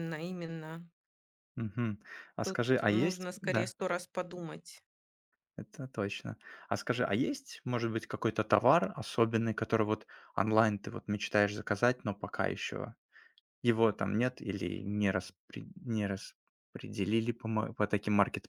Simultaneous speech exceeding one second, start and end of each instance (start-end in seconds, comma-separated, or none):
2.4-3.7